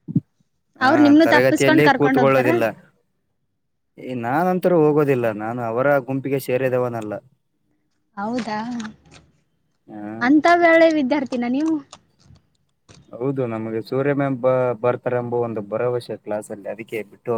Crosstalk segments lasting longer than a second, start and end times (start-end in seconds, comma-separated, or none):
0.9-2.5